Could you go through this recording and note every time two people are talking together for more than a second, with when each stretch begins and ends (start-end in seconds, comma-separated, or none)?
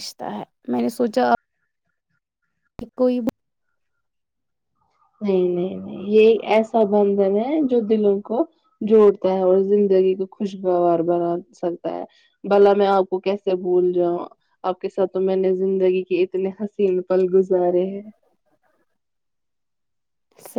none